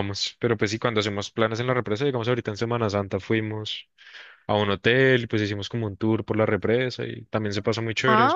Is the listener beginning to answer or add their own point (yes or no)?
yes